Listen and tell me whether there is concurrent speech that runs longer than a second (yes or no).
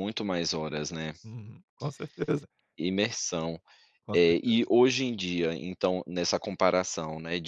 no